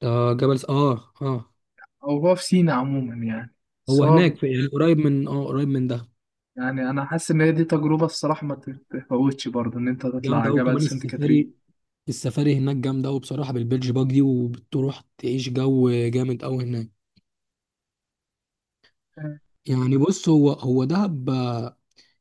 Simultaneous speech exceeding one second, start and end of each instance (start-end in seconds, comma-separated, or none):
10.2-11.5